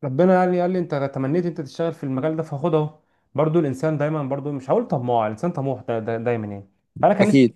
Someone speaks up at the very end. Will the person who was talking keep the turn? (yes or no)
yes